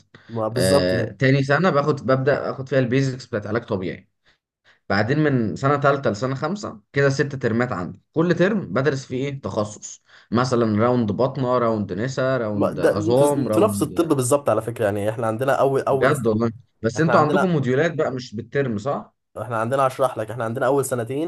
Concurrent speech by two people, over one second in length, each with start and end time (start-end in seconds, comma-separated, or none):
12.5-14.0